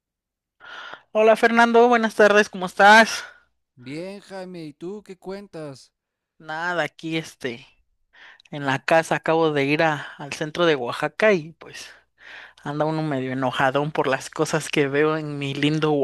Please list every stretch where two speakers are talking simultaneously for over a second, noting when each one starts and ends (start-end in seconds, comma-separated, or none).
none